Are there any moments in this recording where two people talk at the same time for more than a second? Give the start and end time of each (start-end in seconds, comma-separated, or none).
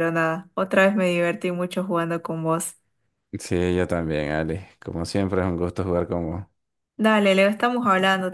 none